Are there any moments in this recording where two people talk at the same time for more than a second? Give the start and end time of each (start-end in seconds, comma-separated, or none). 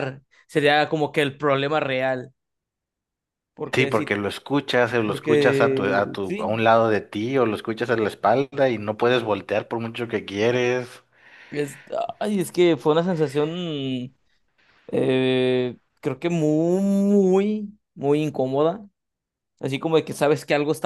5.0-6.5